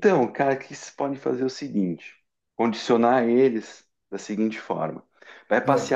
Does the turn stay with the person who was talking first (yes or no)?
yes